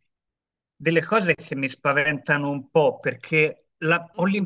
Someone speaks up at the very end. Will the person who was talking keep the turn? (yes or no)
yes